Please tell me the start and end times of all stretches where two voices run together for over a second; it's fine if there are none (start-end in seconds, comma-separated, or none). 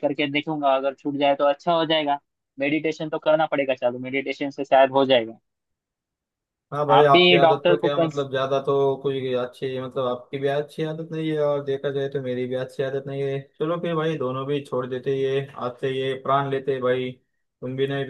6.9-8.3